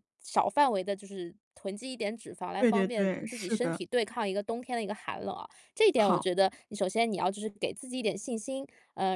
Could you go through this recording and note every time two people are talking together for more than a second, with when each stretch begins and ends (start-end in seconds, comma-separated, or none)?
2.6-3.8